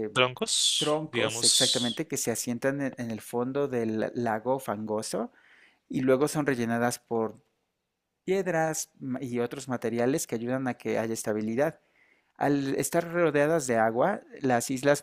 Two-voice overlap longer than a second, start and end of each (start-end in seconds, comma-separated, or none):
0.8-2.0